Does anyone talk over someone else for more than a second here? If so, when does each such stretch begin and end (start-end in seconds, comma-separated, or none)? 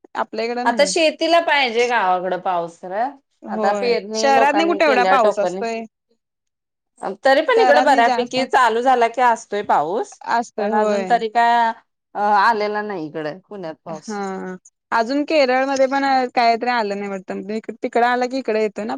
3.5-5.6